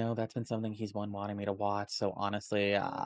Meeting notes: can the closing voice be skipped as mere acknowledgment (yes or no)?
no